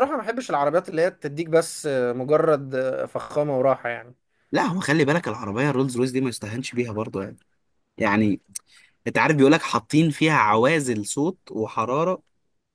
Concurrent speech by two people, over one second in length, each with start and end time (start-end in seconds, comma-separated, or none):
none